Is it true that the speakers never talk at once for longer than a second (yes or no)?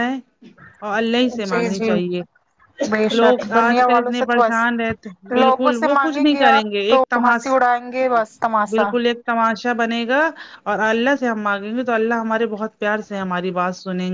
no